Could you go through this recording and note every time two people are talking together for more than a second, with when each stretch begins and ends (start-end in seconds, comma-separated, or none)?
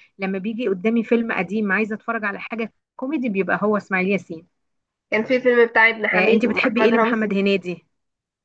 6.1-7.4